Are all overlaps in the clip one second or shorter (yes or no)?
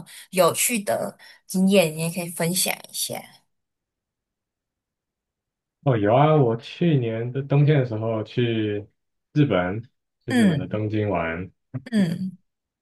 yes